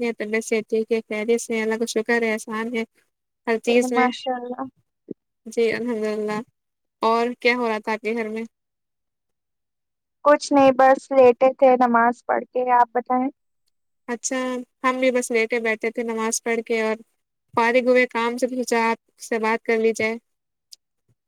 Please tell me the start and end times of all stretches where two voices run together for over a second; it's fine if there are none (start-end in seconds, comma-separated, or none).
none